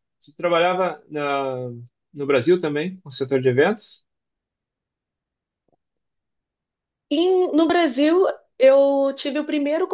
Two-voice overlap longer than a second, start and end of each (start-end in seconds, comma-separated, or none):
none